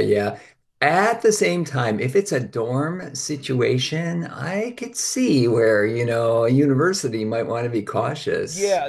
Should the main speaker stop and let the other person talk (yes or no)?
yes